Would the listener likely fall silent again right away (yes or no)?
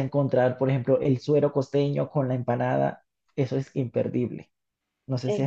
no